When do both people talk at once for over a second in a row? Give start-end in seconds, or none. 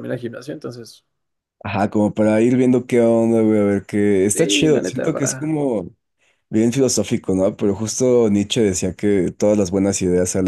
4.3-5.6